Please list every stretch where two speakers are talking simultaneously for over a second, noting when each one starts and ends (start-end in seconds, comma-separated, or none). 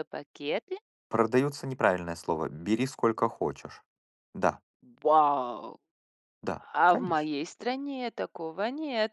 none